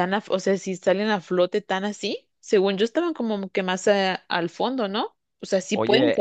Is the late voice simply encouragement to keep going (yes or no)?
no